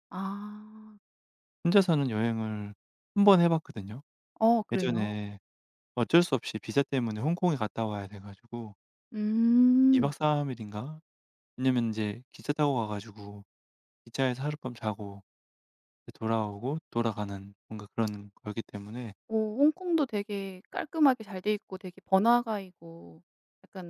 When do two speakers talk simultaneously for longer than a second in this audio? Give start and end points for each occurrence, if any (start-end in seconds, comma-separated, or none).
none